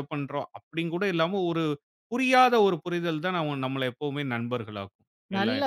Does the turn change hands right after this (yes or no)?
yes